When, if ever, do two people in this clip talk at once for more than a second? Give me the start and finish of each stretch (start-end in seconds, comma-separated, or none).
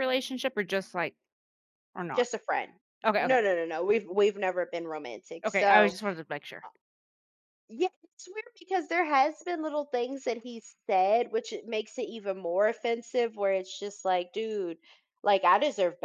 none